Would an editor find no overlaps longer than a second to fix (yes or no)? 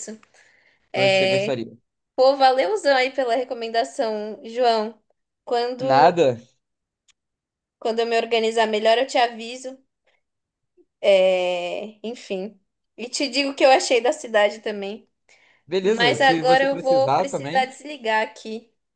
no